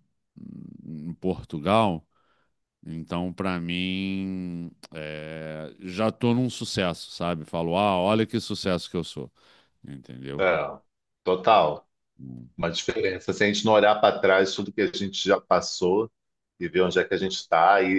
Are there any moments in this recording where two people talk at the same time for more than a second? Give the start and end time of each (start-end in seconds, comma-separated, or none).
none